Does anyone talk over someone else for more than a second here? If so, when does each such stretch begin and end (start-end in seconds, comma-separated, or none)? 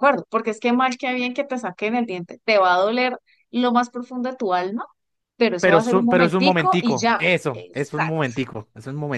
5.6-8.3